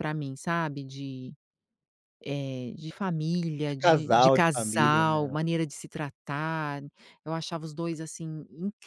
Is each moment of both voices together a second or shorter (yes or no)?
no